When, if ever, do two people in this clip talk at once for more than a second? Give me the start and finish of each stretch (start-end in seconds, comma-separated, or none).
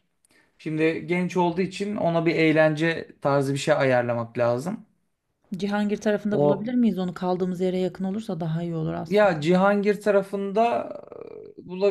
none